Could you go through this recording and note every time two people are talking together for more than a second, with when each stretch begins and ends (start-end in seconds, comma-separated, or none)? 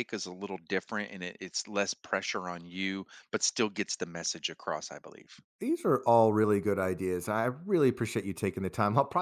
none